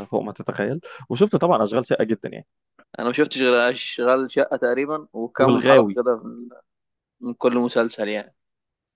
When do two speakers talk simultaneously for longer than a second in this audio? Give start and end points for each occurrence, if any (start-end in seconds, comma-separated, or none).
none